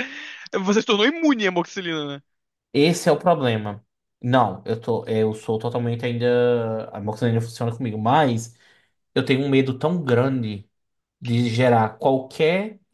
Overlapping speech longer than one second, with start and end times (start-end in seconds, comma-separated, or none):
none